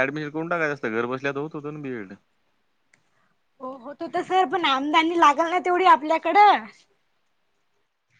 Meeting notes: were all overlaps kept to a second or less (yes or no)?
yes